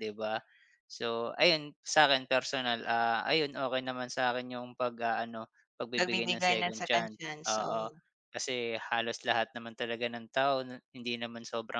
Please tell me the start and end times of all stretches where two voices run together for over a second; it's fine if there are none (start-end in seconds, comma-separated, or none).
6.0-7.9